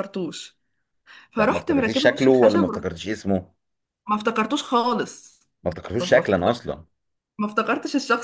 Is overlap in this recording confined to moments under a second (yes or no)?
no